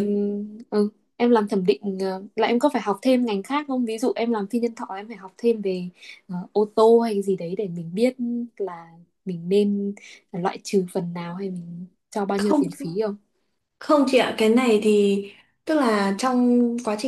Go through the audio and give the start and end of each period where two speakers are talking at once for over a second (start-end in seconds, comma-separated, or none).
none